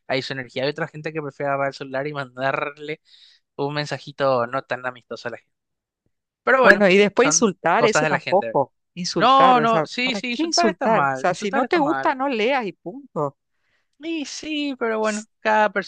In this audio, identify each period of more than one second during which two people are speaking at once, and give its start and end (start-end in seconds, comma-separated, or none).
6.6-8.6, 9.2-12.2